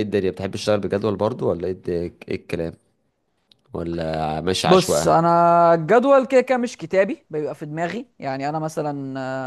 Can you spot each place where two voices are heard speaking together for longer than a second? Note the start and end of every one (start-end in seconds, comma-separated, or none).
none